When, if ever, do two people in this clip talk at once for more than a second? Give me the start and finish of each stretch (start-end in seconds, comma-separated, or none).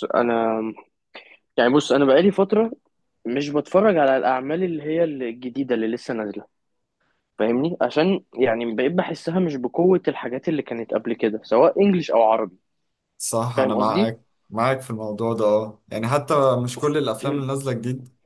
none